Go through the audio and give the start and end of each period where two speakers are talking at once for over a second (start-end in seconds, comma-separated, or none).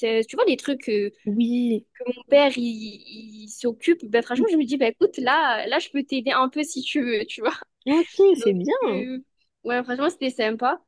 none